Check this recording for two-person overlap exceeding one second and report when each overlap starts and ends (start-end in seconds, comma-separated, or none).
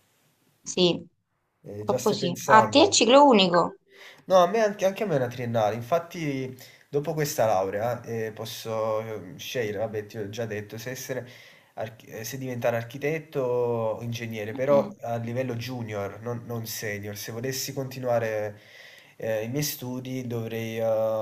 1.8-3.0